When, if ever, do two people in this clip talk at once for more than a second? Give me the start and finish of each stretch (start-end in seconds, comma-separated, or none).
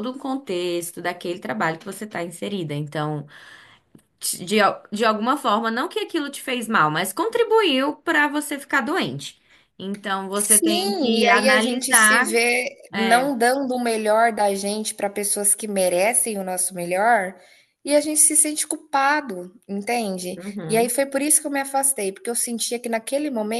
10.3-12.3